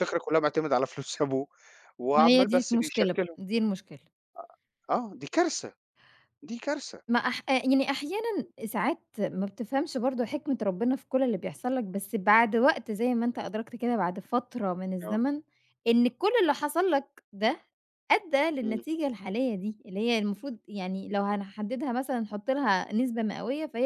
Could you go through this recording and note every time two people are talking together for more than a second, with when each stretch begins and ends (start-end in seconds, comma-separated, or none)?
2.1-3.4